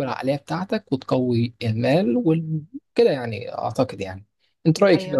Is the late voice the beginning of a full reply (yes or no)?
yes